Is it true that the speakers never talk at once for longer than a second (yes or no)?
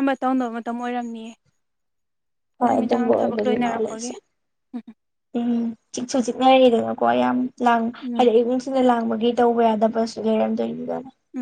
no